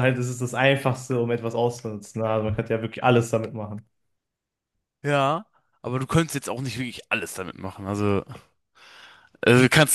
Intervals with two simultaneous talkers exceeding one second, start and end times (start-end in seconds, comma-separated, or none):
none